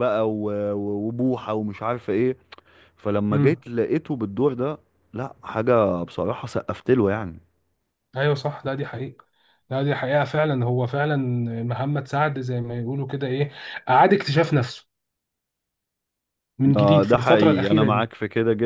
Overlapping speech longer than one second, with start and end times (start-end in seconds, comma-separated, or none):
16.8-18.0